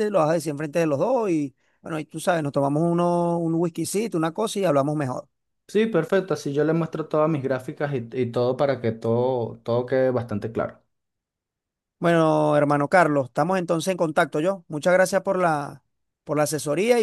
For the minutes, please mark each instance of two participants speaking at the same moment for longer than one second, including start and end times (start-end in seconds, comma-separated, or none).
none